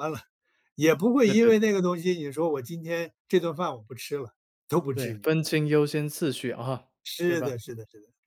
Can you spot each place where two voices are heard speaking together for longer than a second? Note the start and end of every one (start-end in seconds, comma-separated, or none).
none